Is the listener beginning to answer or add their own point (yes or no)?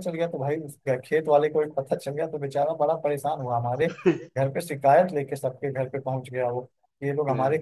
no